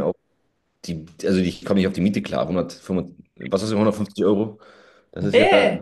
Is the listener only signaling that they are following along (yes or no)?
no